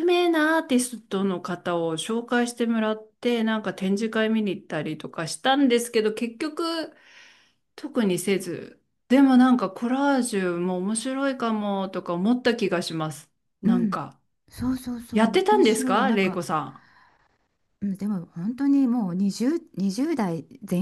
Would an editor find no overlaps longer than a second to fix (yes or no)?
no